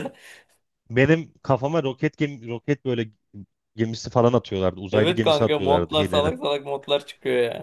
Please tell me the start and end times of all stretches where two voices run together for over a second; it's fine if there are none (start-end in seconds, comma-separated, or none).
4.9-6.3